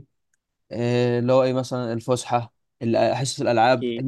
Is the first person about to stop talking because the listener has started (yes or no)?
no